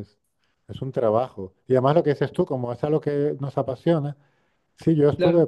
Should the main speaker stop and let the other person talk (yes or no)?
no